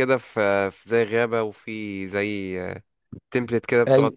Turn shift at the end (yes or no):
yes